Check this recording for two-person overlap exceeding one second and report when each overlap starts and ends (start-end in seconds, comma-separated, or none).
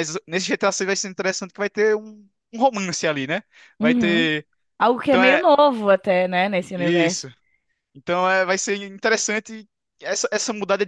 none